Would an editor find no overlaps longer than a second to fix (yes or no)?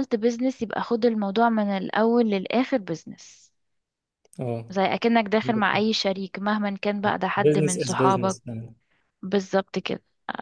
no